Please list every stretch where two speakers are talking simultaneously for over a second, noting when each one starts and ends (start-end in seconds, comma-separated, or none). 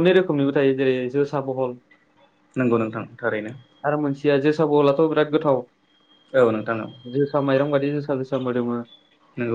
none